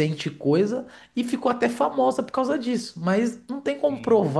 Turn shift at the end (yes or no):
no